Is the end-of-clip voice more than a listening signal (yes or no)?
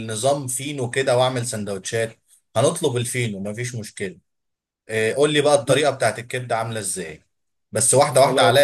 no